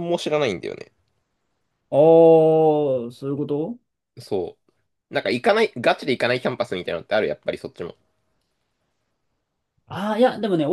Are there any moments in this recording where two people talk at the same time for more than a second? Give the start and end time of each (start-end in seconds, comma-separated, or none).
none